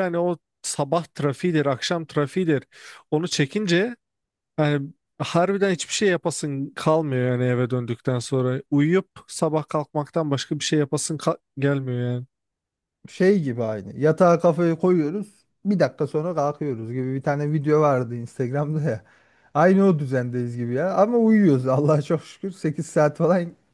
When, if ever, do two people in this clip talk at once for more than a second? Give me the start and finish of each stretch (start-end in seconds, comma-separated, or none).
none